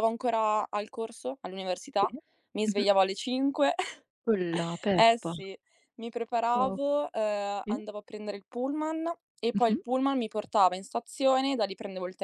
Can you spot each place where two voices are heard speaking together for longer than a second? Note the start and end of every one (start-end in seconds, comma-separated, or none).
none